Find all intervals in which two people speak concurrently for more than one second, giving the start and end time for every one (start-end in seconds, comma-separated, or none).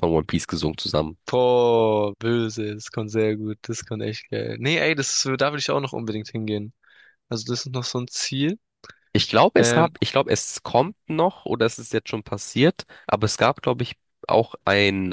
none